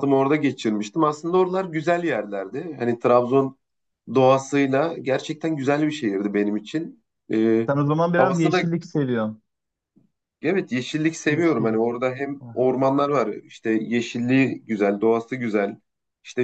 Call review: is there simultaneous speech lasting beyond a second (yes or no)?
no